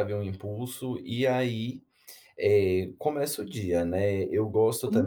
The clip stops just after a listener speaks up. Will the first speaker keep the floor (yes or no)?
yes